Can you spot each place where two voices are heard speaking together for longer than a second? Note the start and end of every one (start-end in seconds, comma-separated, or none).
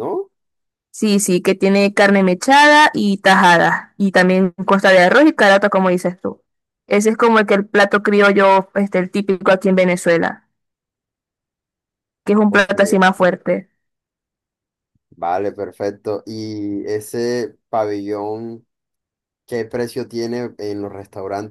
none